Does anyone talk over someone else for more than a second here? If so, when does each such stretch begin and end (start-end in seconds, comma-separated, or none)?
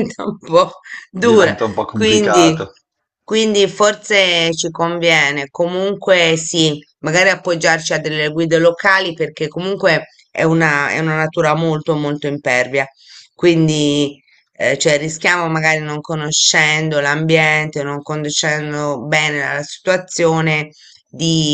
1.2-2.6